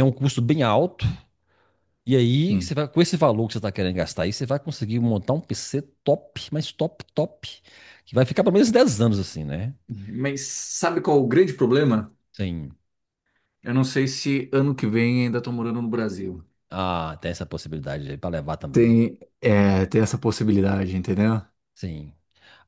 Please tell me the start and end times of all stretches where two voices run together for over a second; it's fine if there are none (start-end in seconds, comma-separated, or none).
none